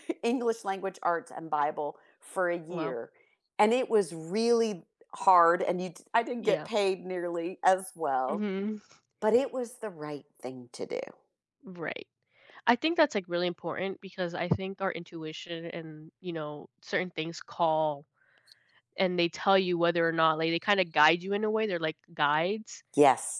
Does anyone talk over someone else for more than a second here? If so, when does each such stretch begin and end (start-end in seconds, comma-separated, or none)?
none